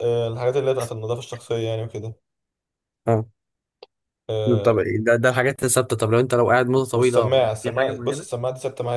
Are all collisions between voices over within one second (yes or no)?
no